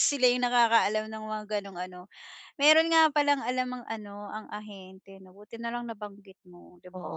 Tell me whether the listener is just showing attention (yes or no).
no